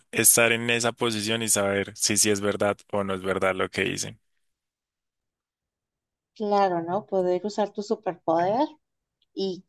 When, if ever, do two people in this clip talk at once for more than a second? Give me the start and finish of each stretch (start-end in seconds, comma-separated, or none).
none